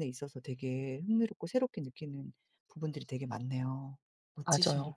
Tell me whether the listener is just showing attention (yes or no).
no